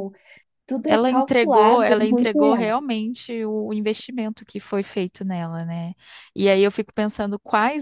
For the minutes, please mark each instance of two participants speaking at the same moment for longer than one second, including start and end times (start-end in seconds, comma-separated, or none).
0.9-2.7